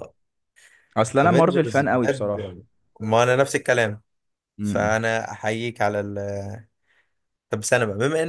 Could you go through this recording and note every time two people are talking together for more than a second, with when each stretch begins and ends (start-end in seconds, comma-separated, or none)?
1.2-2.5